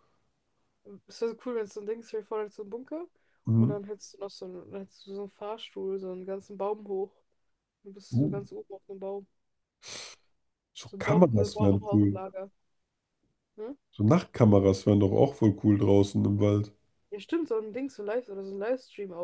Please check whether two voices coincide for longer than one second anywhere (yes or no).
yes